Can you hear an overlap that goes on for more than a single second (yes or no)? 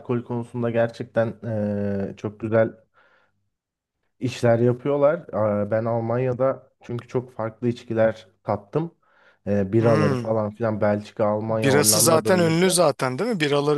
yes